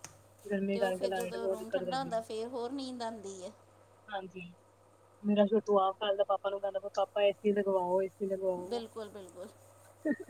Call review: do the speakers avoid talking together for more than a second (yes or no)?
no